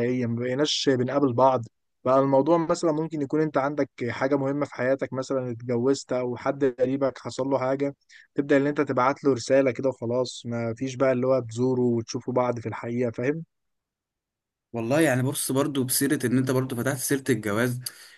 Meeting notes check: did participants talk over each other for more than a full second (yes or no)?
no